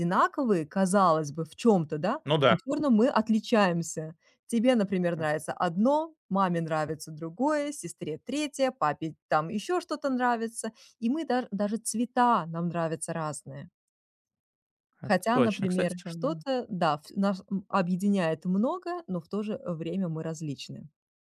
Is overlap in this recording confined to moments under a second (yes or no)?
no